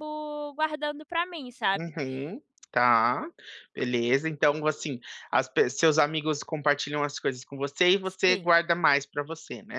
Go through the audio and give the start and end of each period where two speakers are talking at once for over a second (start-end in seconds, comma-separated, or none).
none